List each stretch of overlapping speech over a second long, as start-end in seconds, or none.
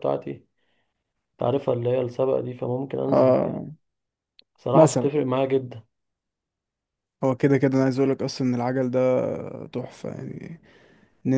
none